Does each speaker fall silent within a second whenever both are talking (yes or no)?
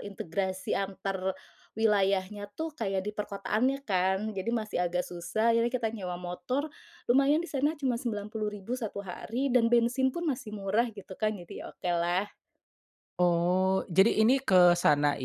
yes